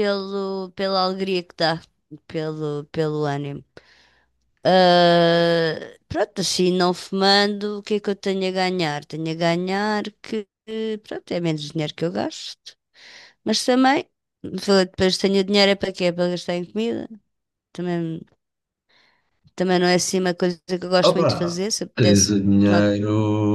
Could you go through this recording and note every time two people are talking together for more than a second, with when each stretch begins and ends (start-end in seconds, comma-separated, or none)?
21.0-22.9